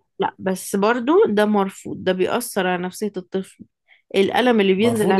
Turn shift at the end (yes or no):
yes